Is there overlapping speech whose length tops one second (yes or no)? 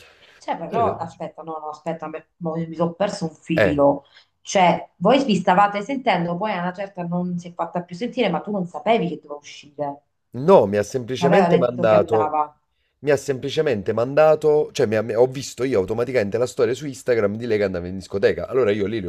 yes